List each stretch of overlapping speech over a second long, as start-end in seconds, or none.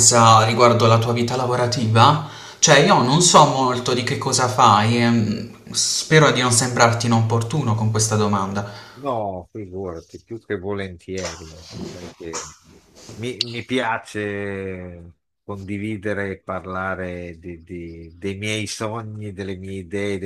none